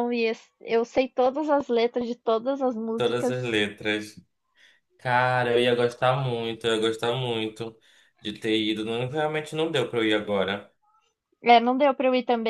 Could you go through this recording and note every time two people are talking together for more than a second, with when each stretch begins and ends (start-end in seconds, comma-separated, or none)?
none